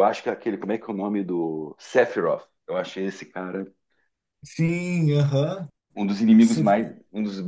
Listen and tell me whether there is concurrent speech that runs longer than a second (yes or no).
no